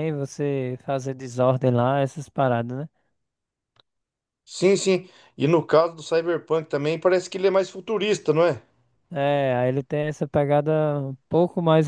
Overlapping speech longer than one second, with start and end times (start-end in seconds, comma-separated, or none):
none